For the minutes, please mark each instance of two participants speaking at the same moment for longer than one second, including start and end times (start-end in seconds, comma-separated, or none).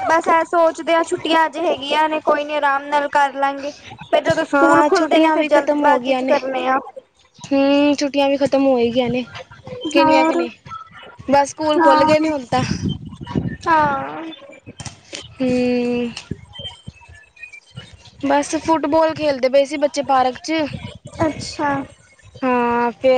4.5-6.3